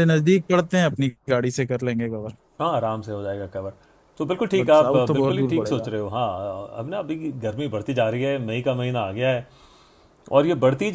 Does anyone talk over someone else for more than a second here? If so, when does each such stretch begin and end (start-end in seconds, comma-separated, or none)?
4.5-5.9